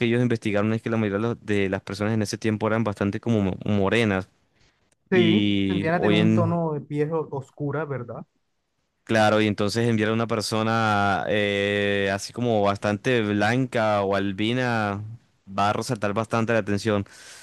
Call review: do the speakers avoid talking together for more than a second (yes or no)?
no